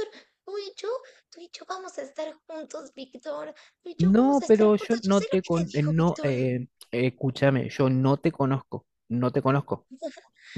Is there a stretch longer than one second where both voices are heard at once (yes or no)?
yes